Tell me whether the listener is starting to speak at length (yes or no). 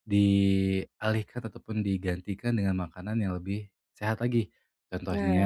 no